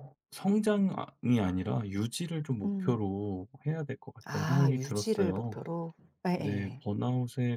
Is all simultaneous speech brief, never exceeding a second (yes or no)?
no